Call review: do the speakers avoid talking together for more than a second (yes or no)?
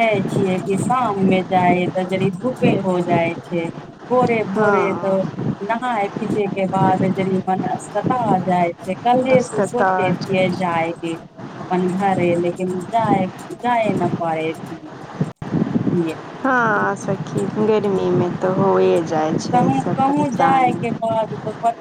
no